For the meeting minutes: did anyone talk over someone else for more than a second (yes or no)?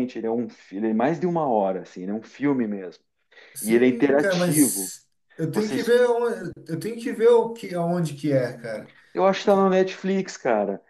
yes